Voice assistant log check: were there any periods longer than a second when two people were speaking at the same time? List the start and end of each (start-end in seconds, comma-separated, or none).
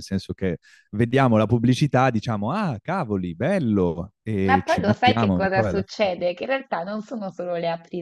4.4-6.1